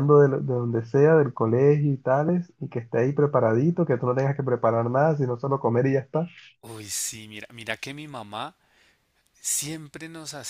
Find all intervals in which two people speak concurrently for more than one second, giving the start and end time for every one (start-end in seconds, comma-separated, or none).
none